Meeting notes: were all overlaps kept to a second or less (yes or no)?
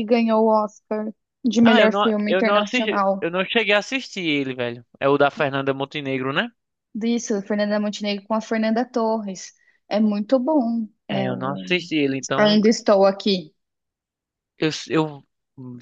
no